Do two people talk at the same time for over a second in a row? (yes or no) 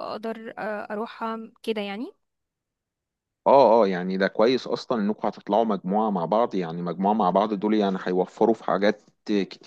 no